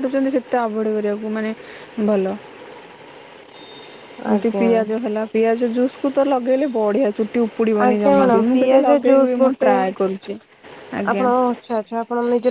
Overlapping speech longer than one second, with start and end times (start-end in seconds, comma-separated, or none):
7.9-9.7